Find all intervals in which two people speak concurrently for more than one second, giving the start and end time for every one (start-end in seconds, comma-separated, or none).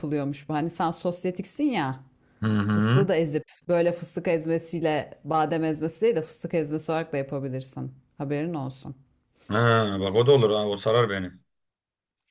none